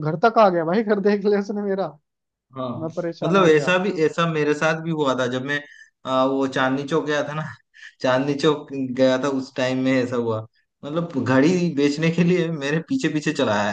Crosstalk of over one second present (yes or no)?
no